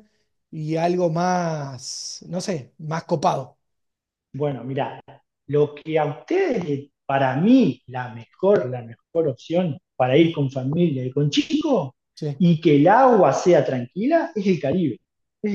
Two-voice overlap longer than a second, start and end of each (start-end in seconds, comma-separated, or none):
none